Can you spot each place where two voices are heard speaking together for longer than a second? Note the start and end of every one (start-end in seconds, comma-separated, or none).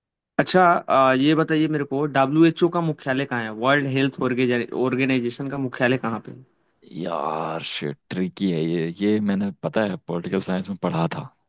none